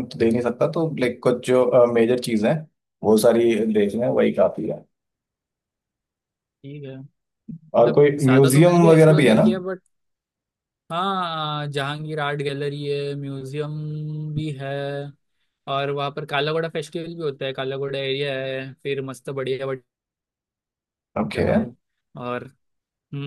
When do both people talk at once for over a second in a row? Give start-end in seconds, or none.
7.8-9.4